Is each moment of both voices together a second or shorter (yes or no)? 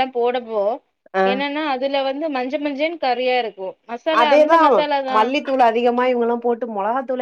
yes